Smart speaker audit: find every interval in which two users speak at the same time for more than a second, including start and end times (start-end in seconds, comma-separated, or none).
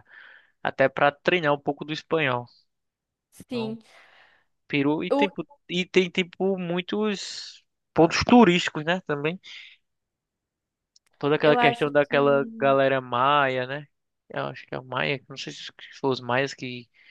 11.4-12.8